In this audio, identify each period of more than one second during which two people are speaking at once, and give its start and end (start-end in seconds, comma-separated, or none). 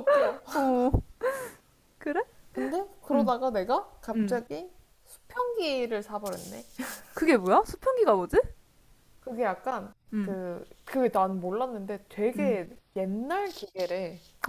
none